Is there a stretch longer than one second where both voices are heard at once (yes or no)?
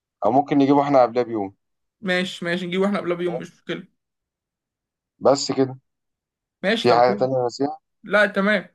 no